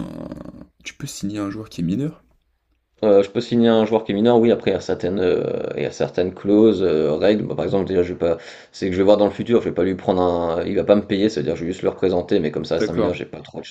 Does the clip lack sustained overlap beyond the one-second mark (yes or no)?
yes